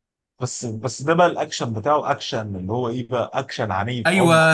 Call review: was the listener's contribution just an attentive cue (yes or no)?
no